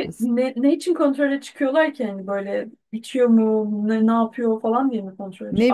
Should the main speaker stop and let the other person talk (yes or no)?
yes